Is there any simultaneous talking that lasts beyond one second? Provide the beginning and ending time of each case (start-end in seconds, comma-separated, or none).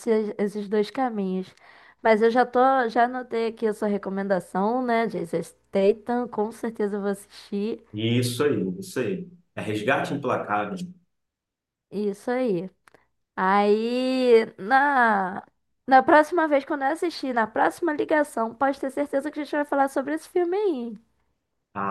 none